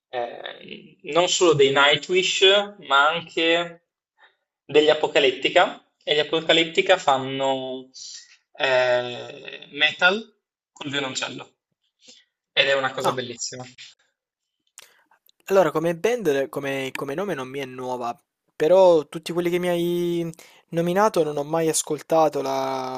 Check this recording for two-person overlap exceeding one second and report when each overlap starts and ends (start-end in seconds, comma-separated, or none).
none